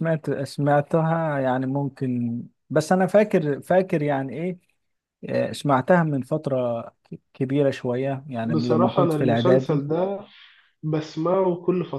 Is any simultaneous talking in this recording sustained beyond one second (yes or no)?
yes